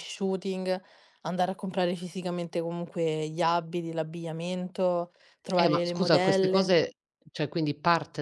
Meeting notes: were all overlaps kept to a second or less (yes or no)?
no